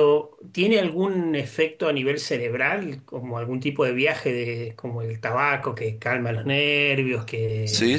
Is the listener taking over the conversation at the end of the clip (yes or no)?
yes